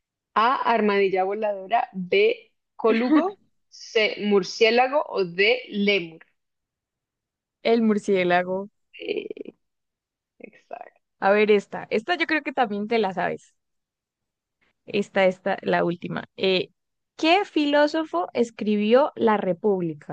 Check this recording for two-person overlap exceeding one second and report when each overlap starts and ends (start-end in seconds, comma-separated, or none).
none